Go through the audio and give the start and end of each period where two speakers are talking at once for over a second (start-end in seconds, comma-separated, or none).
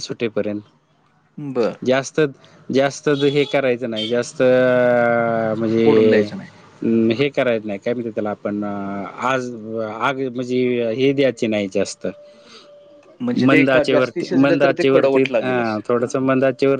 13.5-15.8